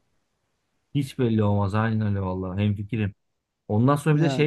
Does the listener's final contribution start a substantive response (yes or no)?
no